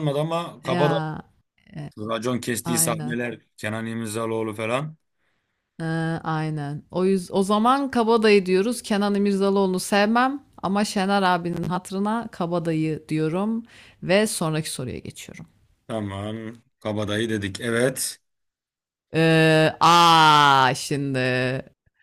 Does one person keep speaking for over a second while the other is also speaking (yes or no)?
no